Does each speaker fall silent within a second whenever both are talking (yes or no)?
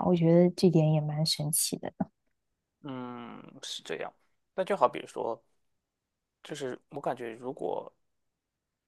yes